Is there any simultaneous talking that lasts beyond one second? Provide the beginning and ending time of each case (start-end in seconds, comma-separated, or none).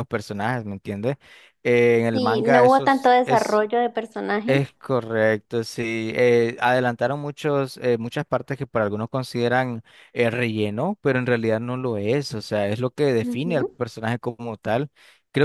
2.1-3.6